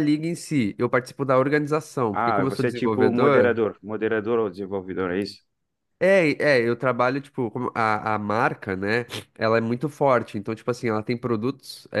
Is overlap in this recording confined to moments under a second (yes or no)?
no